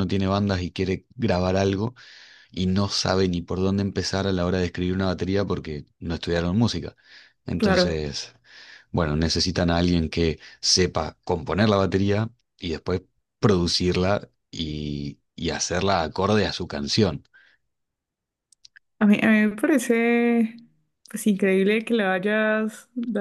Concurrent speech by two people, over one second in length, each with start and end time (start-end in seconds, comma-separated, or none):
none